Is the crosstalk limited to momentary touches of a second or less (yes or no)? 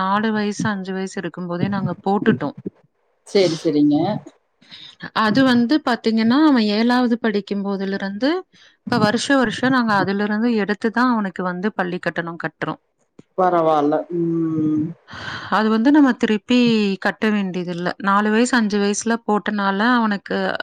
yes